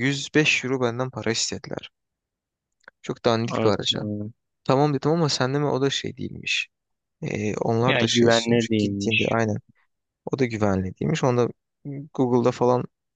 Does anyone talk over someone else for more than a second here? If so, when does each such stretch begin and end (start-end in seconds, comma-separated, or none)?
7.9-9.3